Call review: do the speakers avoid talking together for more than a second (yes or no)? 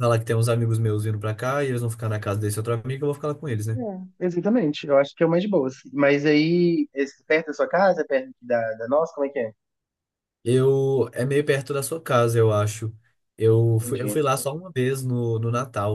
yes